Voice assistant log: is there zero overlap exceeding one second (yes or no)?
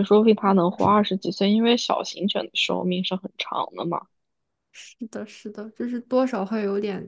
yes